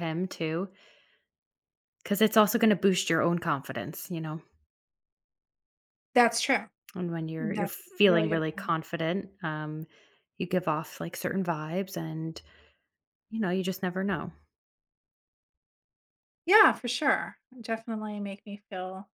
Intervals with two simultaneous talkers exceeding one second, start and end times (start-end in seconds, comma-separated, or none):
7.4-8.7